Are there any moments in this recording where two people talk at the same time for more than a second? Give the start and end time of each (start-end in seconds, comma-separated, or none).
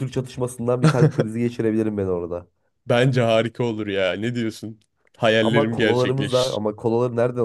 5.4-6.6